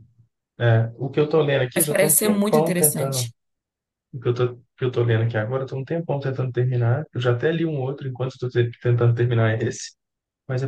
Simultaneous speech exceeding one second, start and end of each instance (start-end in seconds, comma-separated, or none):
1.8-3.3